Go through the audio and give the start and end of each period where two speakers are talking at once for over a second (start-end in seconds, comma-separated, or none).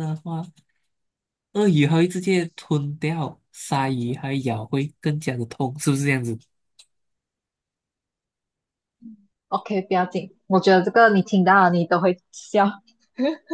none